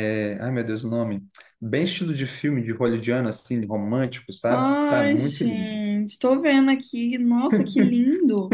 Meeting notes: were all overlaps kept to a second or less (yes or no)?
no